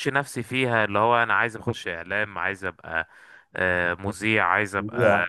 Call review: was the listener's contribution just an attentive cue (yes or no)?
yes